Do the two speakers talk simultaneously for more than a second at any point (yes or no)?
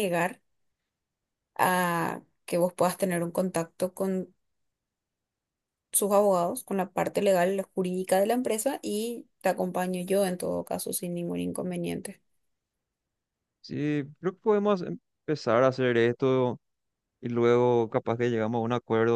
no